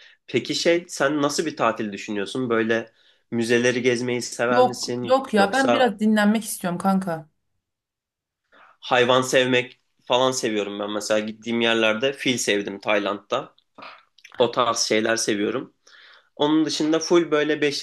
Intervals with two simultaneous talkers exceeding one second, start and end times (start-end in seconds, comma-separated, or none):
4.5-5.9